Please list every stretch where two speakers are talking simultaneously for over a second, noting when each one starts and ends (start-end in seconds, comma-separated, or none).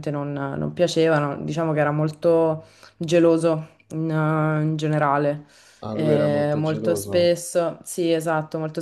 5.9-7.3